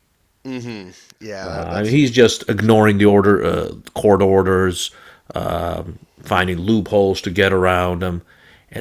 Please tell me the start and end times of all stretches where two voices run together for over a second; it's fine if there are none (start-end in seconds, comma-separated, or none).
1.4-2.8